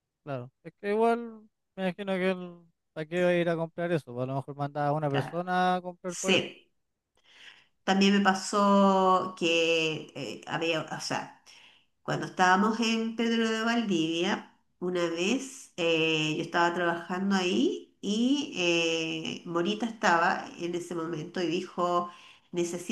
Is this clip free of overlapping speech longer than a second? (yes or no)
yes